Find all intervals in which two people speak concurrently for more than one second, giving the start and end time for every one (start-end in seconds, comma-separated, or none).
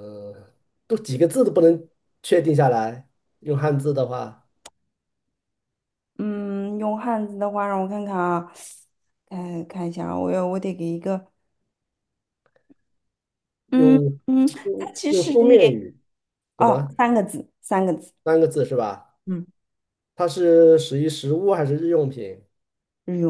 13.7-15.8